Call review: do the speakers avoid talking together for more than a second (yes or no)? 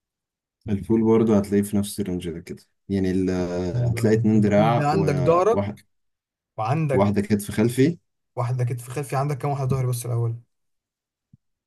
no